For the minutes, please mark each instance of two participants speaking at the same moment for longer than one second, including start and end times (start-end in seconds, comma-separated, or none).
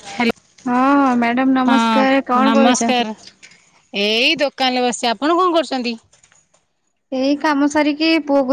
1.7-3.1